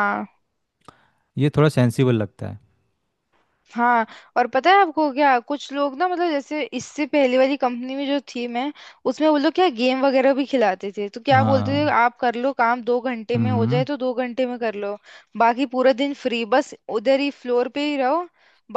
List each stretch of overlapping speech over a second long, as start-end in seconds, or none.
none